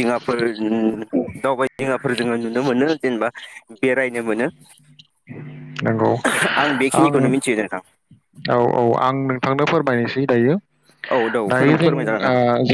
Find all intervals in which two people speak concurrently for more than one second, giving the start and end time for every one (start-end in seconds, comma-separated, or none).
none